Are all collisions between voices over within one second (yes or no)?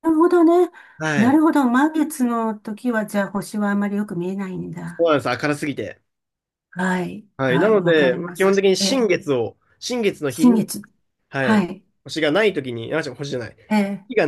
no